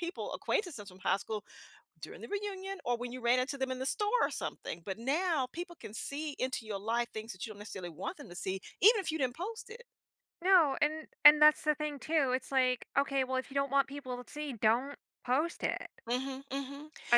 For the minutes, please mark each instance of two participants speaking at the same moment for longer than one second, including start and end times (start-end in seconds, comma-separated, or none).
none